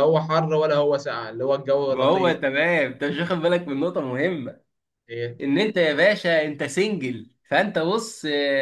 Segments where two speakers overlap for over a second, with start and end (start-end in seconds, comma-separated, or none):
none